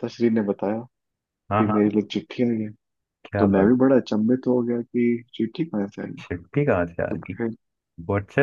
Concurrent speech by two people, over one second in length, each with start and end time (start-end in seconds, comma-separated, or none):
none